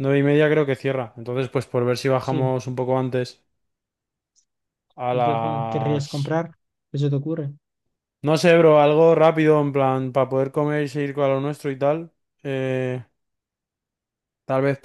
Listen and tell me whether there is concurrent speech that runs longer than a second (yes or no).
yes